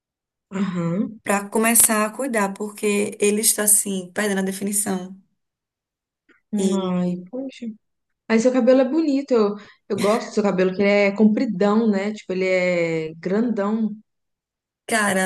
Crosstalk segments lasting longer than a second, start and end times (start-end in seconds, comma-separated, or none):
none